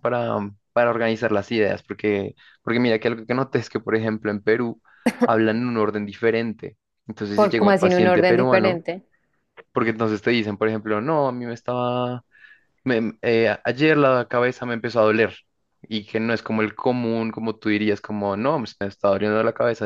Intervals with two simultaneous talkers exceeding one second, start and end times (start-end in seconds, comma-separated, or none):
7.3-8.8